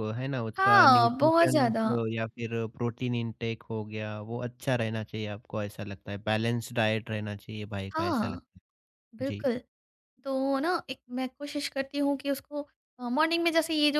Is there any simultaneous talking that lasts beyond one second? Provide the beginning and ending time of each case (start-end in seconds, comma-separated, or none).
0.6-1.9